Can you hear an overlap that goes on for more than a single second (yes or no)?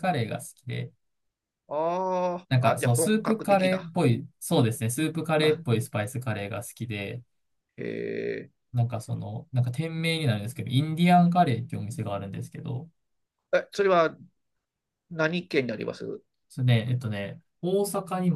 yes